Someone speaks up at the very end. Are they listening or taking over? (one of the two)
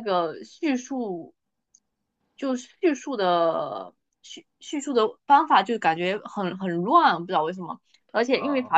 listening